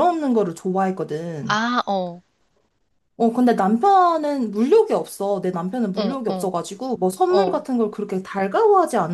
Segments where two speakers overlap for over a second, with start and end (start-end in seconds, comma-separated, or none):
none